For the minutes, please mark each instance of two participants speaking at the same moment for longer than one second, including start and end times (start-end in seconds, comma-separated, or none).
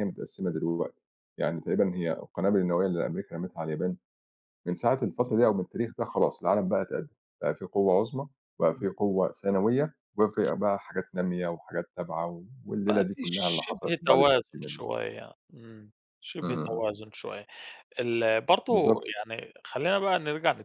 12.9-14.8